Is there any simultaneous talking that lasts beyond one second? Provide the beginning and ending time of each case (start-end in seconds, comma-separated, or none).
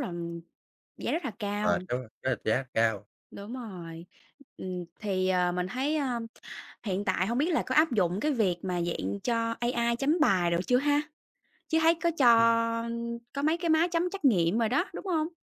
none